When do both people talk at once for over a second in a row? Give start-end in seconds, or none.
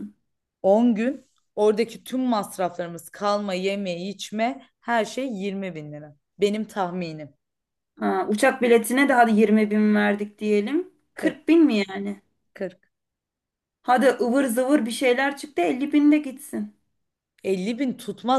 none